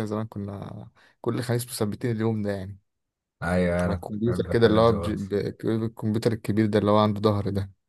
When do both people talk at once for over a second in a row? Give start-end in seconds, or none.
3.9-5.2